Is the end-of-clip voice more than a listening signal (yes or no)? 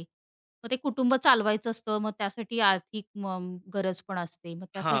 yes